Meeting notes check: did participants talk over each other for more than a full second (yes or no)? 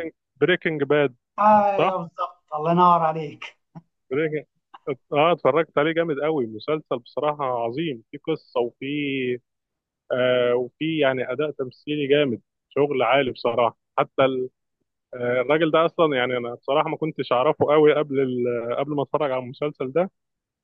no